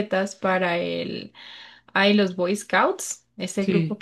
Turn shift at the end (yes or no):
no